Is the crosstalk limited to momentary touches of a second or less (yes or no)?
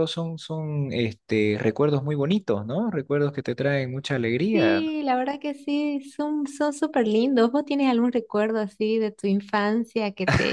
yes